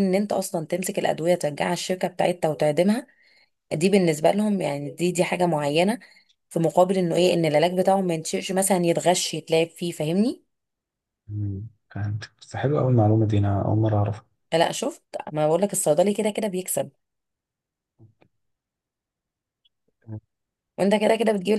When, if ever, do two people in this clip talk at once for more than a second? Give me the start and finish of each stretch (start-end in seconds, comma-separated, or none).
none